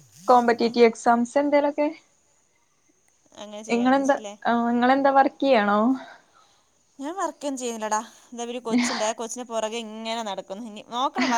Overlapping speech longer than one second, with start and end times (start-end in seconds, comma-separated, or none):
none